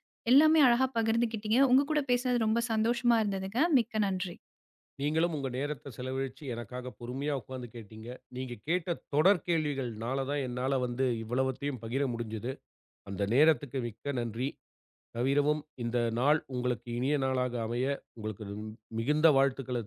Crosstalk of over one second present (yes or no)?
no